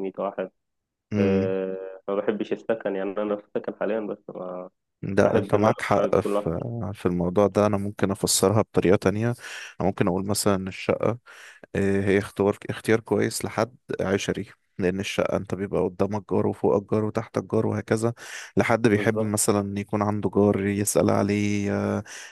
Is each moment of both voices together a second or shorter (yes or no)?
no